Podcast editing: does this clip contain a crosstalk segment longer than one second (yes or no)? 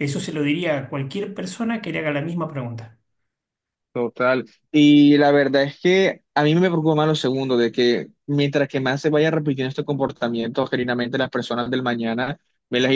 no